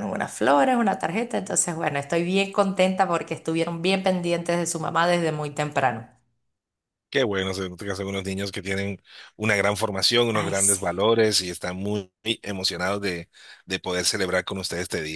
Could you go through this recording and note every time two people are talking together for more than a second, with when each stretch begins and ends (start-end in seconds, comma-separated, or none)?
none